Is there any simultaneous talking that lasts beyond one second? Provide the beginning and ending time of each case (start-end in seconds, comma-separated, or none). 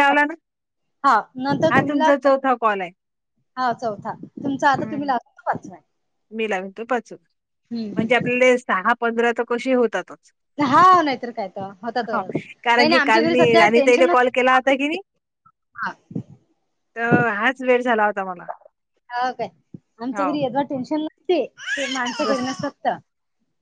12.8-14.7